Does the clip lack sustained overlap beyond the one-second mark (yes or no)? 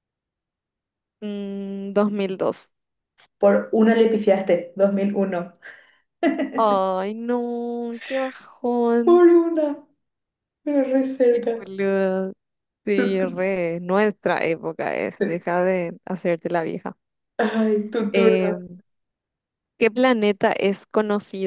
yes